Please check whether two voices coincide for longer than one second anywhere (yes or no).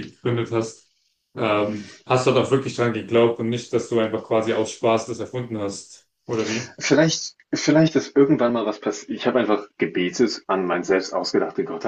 no